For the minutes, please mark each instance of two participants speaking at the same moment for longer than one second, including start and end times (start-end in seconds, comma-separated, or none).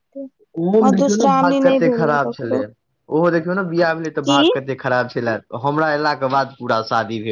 0.8-2.6